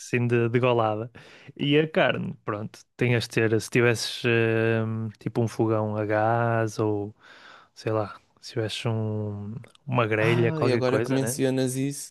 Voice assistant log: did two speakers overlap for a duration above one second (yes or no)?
yes